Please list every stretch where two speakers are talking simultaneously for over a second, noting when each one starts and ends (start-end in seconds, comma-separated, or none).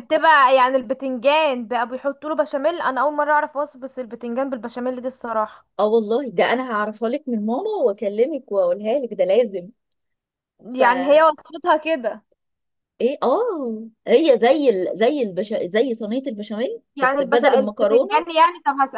16.9-18.2